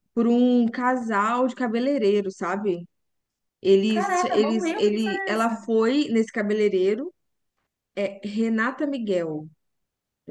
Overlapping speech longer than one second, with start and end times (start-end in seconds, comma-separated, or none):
3.9-5.7